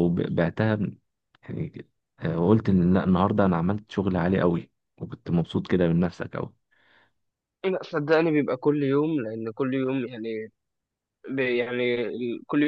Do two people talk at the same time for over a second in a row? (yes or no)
no